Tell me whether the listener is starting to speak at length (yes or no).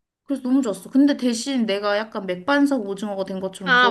yes